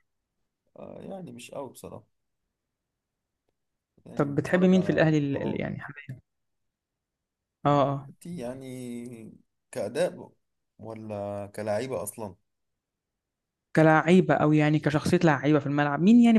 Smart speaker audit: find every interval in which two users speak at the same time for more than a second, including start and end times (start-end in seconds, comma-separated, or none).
4.2-5.6